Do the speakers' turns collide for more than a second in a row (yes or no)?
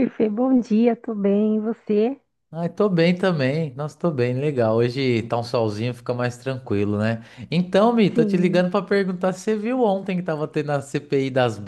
no